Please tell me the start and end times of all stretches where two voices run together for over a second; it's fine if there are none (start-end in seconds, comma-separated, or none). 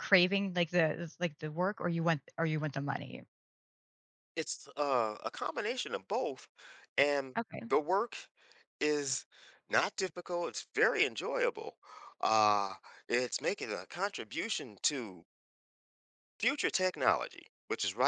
none